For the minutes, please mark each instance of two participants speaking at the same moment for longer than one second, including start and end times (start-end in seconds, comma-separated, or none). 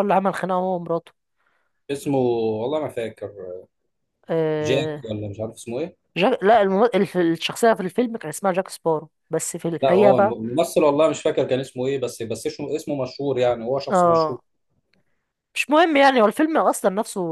none